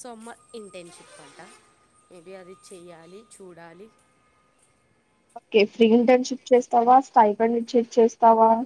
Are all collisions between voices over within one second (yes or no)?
yes